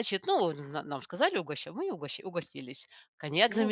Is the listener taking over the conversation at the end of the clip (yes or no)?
no